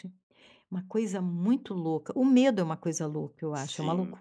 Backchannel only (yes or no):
yes